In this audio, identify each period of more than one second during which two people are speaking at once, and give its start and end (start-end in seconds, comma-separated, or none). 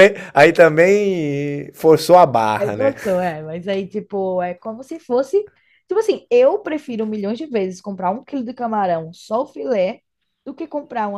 none